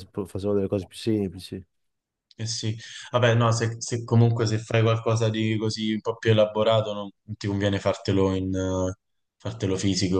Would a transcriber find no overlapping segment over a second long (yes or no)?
yes